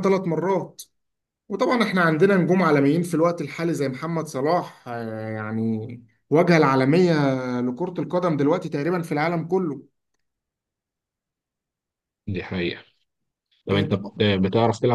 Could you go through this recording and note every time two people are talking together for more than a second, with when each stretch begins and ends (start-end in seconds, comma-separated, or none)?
none